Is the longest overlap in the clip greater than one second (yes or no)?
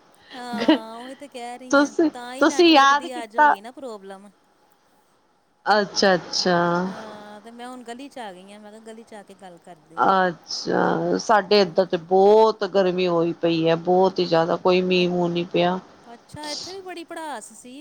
yes